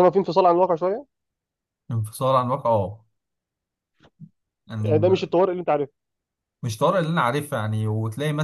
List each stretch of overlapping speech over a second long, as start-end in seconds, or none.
none